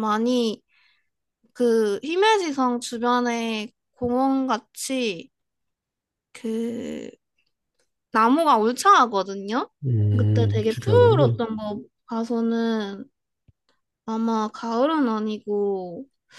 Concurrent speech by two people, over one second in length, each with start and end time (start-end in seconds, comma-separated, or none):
10.2-11.4